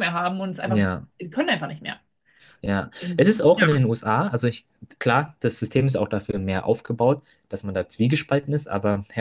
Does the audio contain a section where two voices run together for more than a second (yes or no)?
no